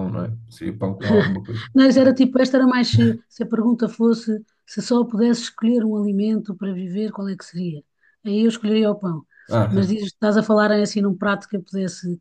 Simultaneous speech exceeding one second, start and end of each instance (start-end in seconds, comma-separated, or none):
none